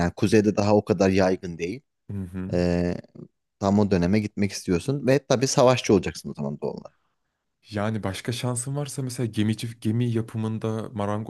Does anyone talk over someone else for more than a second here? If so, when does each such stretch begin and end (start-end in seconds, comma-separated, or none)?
none